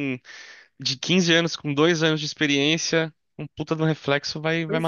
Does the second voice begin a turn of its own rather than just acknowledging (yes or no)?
yes